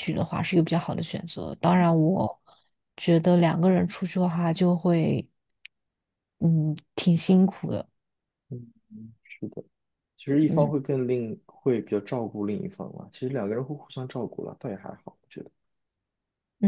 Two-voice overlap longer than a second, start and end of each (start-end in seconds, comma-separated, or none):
none